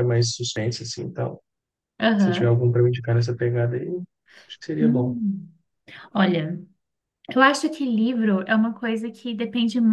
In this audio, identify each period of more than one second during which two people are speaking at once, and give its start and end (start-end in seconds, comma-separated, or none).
none